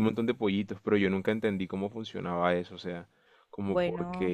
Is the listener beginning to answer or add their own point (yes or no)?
no